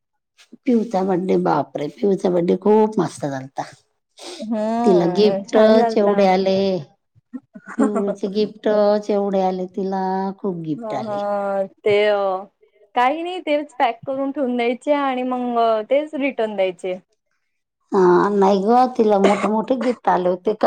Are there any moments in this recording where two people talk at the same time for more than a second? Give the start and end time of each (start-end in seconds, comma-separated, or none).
4.8-6.4